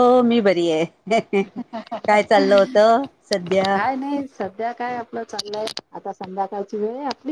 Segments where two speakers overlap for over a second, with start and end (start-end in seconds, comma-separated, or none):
none